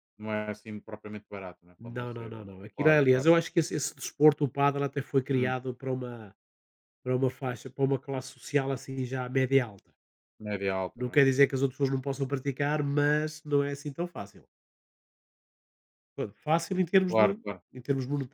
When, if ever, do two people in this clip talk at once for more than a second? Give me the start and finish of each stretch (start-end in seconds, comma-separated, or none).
1.8-3.3